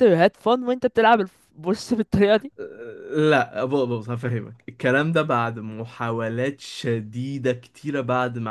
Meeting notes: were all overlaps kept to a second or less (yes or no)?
yes